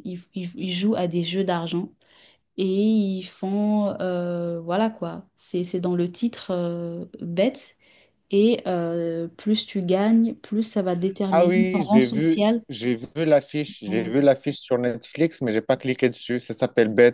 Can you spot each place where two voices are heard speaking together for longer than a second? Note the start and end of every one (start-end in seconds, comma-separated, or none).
11.3-12.6